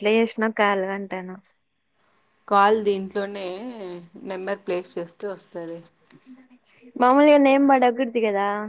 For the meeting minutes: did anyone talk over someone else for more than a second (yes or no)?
no